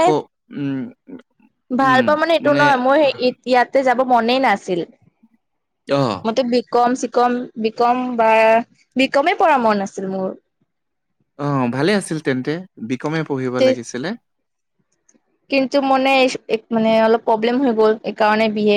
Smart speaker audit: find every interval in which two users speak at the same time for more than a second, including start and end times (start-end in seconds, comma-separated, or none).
none